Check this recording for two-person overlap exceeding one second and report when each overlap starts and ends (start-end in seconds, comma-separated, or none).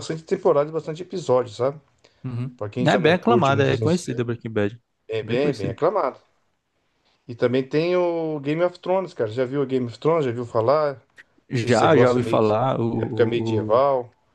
2.6-3.9, 11.6-13.8